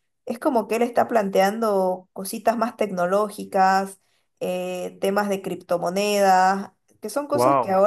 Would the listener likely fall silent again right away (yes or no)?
yes